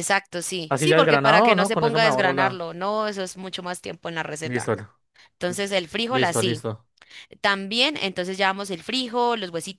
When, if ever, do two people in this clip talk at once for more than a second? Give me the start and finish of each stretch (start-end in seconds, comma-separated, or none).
0.7-2.6